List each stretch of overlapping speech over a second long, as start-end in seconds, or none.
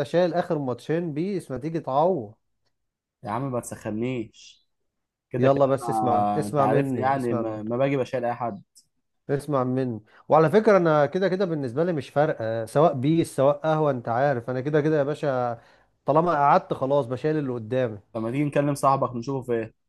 5.4-7.6